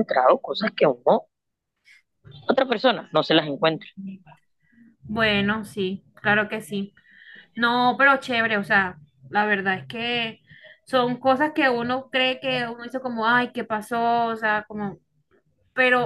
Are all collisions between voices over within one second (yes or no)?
yes